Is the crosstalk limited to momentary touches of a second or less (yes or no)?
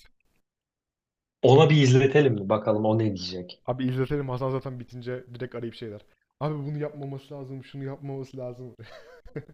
yes